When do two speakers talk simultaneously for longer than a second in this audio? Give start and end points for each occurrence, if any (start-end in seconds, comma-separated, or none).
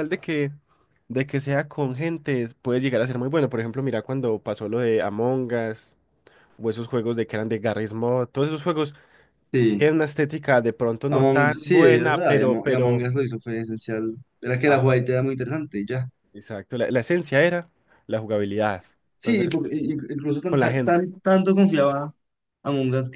11.1-13.1